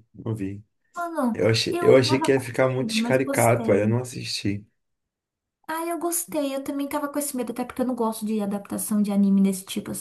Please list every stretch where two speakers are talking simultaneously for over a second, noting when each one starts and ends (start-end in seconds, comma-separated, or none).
1.3-4.0